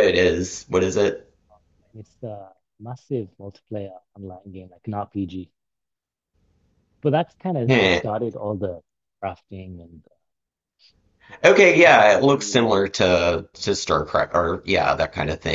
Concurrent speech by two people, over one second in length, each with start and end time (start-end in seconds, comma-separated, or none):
11.4-12.8